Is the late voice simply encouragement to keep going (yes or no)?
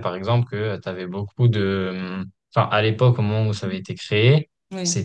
yes